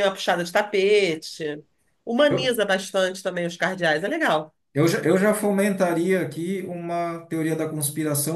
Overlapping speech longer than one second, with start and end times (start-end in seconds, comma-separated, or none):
none